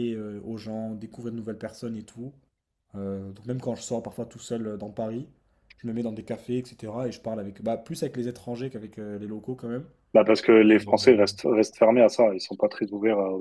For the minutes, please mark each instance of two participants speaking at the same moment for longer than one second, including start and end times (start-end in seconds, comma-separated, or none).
none